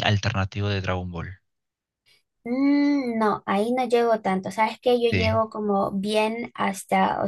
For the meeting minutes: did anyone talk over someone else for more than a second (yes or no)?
no